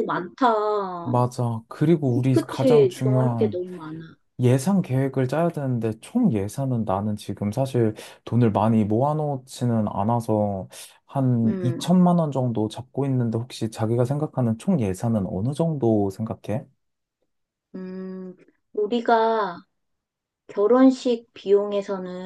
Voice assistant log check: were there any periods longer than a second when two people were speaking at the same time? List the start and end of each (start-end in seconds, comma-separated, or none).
2.3-3.6